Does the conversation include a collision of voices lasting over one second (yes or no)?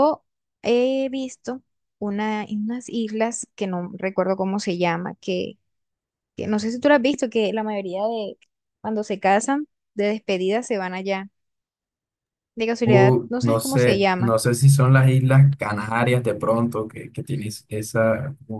yes